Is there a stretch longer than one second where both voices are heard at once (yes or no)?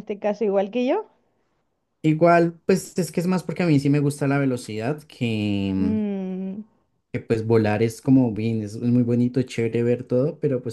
no